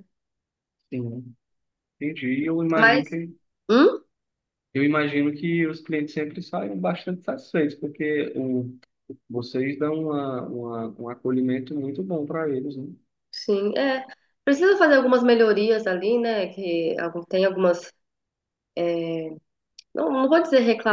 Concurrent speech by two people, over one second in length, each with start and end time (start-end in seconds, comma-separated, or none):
none